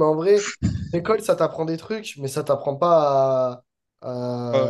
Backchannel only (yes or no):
yes